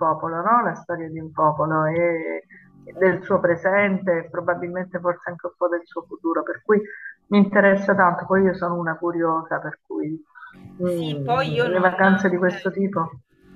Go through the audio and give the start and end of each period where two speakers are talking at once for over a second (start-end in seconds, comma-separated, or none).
10.8-12.8